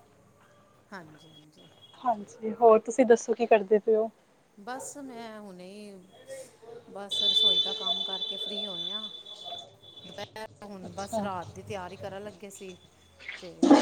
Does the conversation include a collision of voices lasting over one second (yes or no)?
no